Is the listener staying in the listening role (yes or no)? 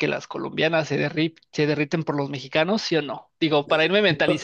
yes